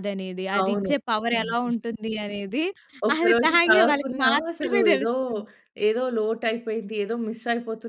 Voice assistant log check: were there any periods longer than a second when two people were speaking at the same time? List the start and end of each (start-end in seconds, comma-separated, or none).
3.2-5.1